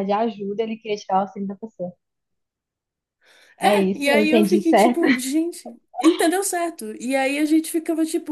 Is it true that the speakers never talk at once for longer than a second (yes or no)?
no